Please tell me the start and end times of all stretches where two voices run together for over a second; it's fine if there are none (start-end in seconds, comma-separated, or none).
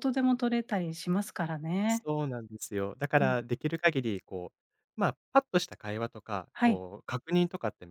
none